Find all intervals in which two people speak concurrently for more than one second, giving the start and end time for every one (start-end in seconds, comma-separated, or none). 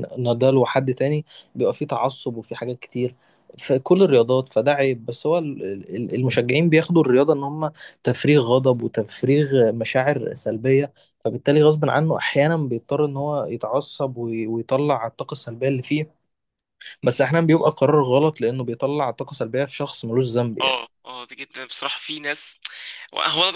none